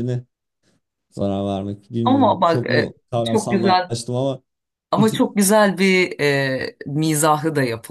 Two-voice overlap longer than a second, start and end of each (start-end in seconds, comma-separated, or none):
2.0-3.9